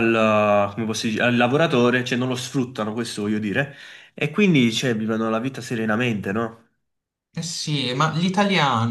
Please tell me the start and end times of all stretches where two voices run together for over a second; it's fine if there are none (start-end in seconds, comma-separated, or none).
none